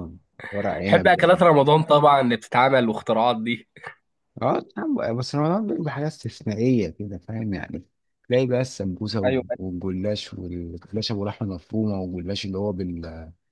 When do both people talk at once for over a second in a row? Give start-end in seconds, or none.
none